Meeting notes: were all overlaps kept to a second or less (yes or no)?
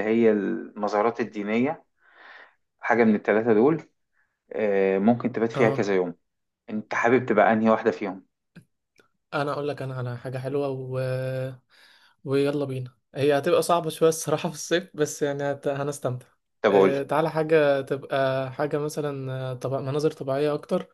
yes